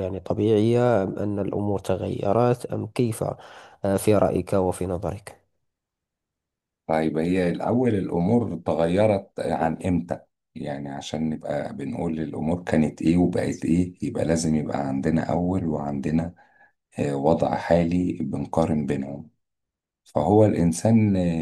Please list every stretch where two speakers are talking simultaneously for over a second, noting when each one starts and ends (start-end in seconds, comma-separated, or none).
none